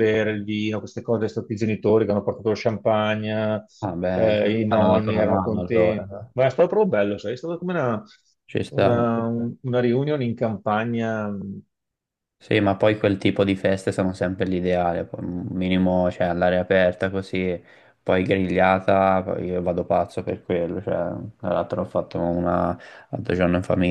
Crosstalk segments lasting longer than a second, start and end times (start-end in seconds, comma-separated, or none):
4.1-6.3